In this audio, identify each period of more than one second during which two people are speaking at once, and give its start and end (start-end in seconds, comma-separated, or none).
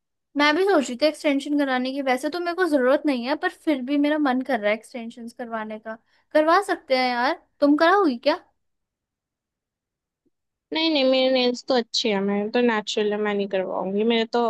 none